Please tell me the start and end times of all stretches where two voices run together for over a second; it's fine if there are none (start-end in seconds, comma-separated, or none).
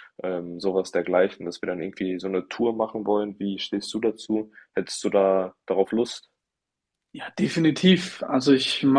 none